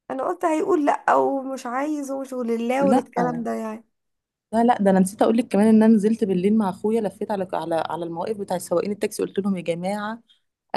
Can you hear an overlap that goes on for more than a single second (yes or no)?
no